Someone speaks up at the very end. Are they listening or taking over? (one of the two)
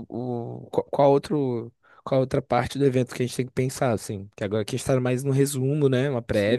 taking over